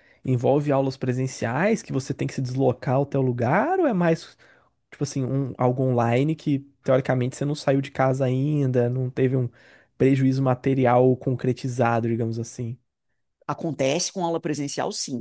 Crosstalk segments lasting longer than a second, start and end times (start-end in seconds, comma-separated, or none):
none